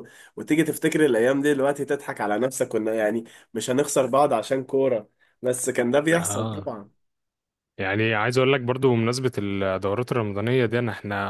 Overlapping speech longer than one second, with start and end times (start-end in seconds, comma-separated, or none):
none